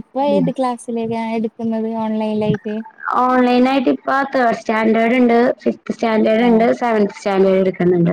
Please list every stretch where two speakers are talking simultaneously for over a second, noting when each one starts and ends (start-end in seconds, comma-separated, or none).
none